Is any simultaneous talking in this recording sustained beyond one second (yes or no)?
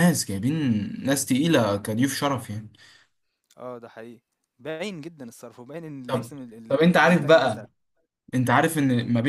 yes